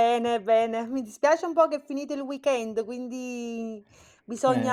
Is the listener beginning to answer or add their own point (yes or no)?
no